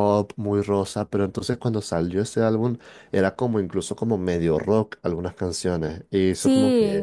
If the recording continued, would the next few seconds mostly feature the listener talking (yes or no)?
no